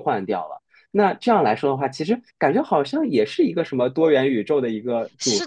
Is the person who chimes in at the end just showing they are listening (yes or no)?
no